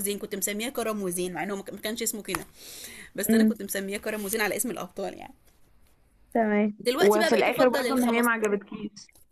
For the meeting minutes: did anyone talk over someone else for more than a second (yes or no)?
yes